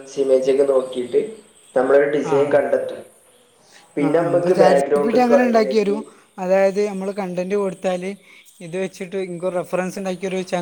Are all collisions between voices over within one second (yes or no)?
no